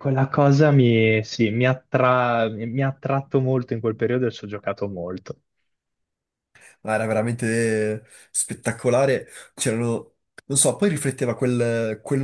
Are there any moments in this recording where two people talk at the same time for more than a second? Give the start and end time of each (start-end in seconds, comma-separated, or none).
none